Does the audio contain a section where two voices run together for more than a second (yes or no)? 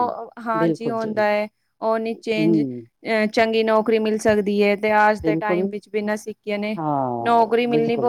no